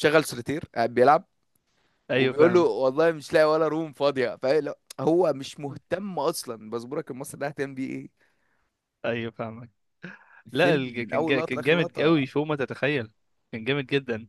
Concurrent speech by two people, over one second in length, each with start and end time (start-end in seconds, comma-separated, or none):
10.5-12.3